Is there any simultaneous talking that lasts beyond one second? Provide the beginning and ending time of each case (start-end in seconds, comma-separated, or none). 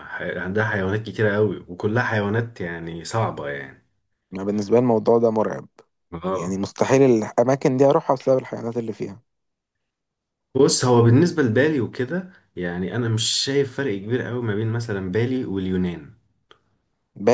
none